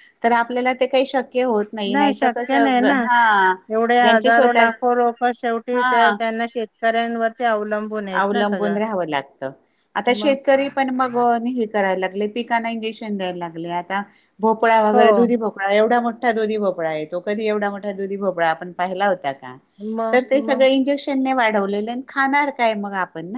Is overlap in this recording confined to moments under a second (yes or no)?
yes